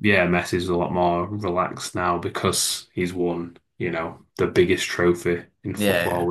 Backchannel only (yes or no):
yes